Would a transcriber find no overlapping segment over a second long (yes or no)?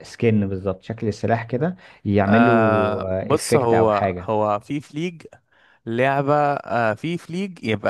no